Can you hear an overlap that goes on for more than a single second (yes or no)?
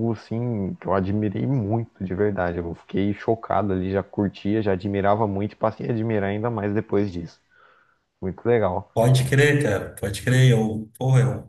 no